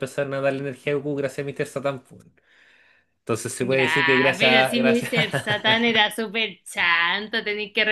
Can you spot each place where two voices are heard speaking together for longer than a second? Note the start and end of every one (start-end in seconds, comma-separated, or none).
3.6-5.1